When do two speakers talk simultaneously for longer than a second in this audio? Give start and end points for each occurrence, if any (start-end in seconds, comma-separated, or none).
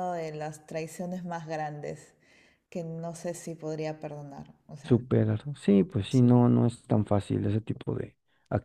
none